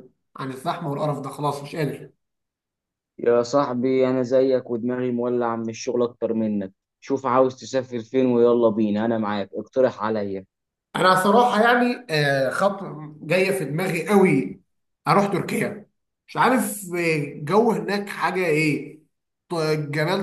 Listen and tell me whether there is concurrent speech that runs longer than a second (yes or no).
no